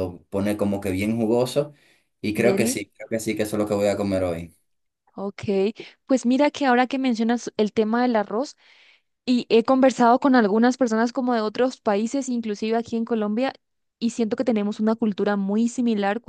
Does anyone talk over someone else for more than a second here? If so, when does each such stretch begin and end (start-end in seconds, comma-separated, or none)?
none